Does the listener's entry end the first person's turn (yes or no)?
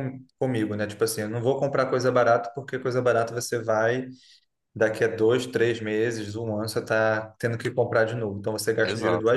no